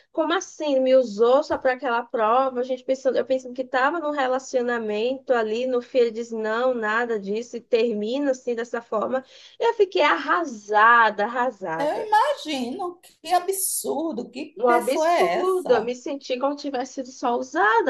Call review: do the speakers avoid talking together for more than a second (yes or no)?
no